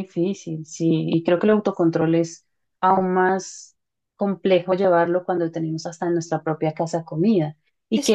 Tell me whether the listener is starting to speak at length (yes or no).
no